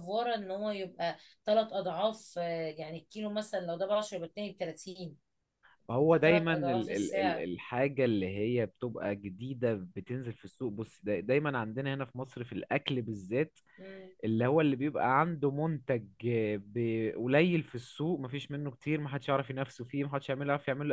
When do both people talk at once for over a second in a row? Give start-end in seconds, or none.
6.0-7.5